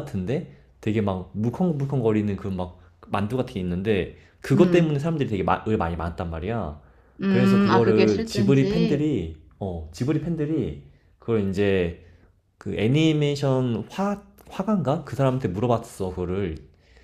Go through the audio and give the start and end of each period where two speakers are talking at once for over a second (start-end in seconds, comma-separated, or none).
7.3-9.0